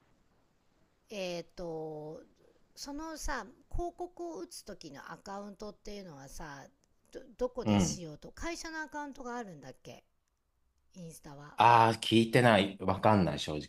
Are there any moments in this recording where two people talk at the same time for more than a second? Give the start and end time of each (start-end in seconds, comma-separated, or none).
none